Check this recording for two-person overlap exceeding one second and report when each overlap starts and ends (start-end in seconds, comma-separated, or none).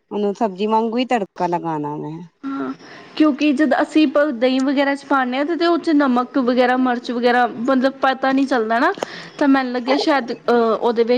none